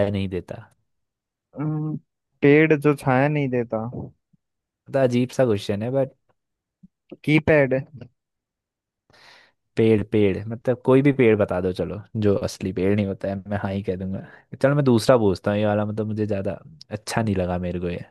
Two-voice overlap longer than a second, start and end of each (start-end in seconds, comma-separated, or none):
none